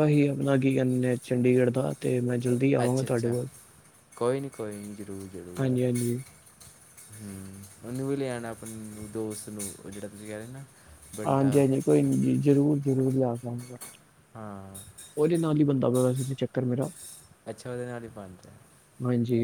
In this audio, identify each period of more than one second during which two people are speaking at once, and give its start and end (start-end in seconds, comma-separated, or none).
none